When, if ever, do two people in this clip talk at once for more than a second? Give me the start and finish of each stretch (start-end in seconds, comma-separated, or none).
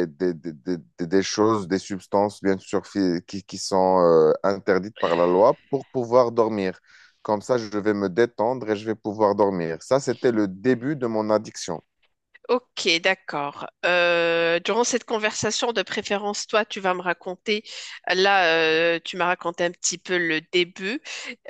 none